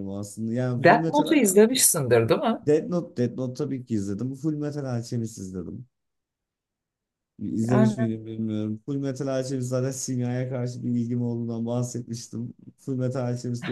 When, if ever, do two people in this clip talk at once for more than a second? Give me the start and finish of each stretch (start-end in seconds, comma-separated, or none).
none